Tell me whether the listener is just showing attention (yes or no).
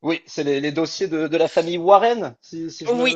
no